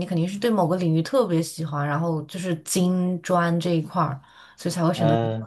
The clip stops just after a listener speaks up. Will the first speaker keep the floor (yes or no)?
no